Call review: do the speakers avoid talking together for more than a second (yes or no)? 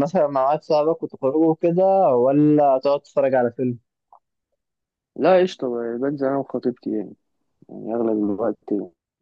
yes